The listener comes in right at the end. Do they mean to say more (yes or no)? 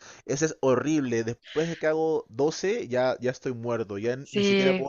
yes